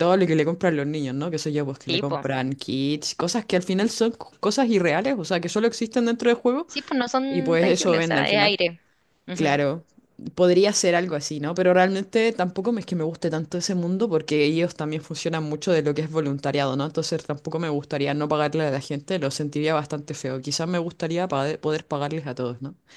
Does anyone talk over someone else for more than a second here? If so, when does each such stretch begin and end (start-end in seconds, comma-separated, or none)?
7.3-8.6